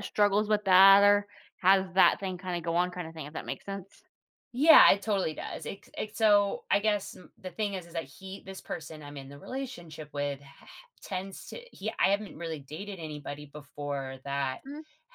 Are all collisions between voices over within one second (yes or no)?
yes